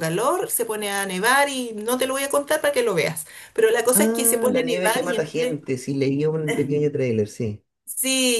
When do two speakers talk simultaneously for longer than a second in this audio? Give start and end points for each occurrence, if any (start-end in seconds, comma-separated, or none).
3.9-5.6